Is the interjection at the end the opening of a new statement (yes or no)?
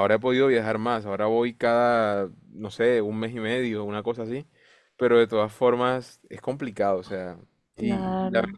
no